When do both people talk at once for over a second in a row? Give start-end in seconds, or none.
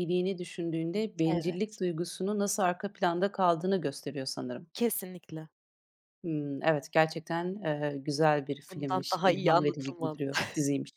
8.7-10.2